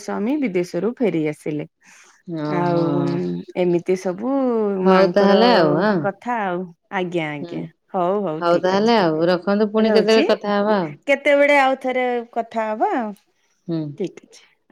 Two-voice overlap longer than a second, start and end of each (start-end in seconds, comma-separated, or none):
8.6-10.3